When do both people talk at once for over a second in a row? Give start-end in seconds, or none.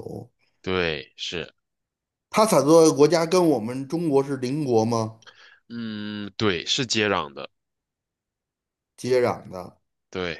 none